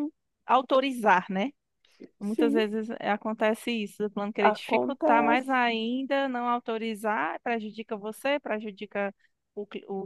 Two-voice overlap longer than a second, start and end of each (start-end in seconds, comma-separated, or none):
4.4-5.6